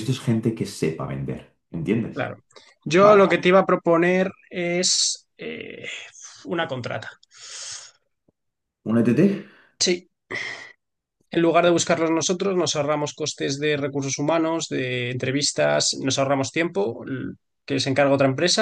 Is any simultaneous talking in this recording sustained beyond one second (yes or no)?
no